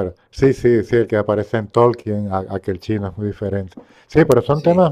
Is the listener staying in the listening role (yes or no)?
yes